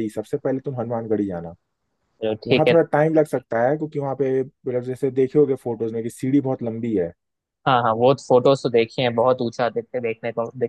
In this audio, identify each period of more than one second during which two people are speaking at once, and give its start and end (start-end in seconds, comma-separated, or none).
none